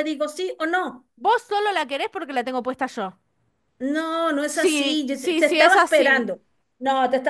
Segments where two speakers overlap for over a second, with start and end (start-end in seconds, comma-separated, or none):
4.4-6.3